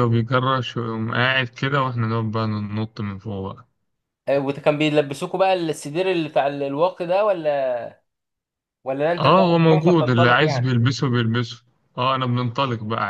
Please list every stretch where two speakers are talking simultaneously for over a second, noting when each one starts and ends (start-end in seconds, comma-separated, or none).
9.2-10.8